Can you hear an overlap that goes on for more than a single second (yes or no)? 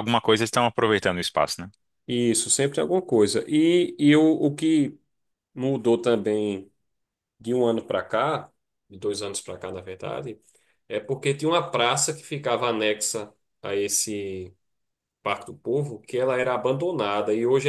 no